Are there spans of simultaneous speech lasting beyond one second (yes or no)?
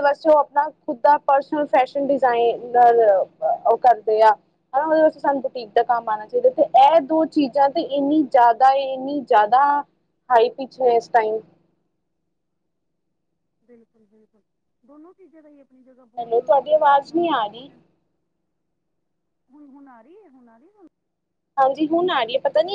yes